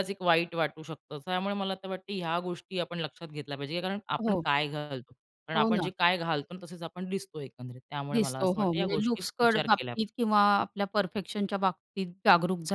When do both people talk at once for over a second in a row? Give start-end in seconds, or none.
8.1-10.0